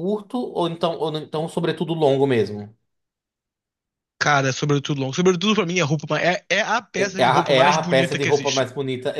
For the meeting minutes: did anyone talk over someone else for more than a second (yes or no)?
yes